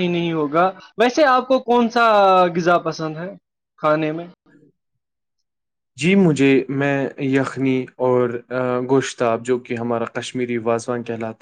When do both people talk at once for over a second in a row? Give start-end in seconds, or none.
none